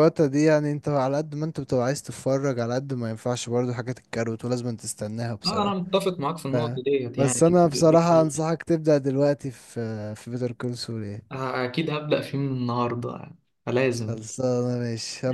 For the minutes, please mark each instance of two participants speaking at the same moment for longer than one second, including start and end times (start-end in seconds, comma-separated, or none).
7.2-8.5